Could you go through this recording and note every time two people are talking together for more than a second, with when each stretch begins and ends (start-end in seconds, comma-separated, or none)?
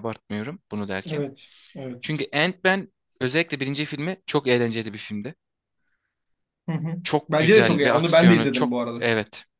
7.0-9.0